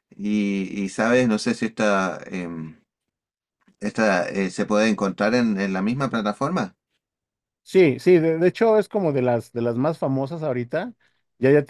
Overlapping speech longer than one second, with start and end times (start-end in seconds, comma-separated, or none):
none